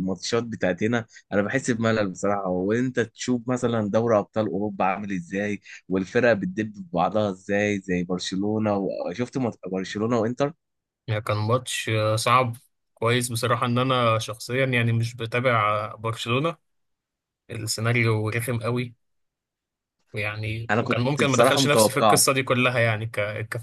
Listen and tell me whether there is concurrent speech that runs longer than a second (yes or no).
yes